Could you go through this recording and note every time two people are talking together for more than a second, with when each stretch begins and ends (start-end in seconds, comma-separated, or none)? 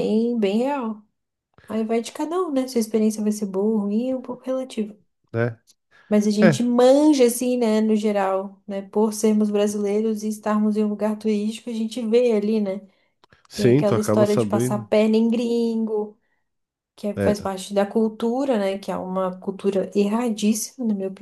13.5-14.9